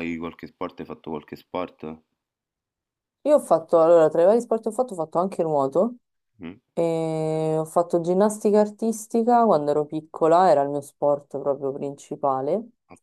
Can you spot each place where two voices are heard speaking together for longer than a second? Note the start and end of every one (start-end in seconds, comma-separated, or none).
none